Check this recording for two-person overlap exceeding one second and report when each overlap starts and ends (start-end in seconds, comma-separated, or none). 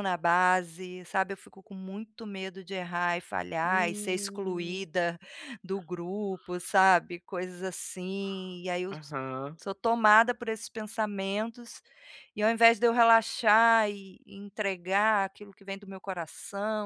3.6-4.9